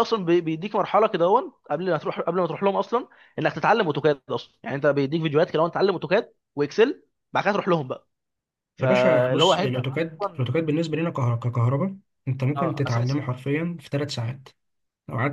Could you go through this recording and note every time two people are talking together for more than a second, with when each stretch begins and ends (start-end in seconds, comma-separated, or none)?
8.8-10.5